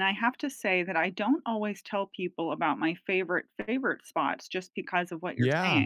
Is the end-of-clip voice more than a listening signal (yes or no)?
no